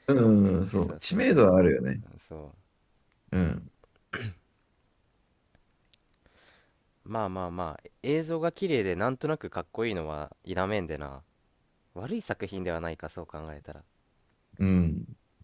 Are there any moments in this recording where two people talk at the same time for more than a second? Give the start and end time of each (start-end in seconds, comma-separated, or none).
0.8-2.0